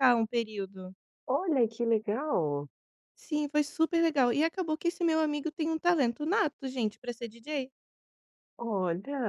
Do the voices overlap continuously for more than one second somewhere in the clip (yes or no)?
no